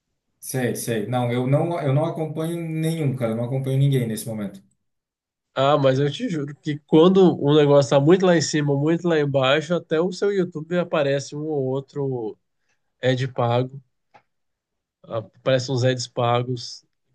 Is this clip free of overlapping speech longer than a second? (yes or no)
yes